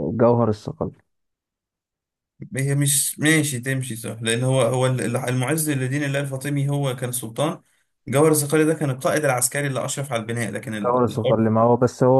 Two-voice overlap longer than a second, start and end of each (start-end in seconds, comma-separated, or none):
none